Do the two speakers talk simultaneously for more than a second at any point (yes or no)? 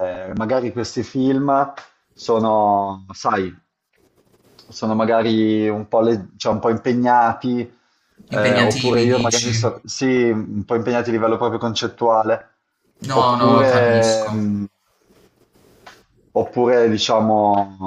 yes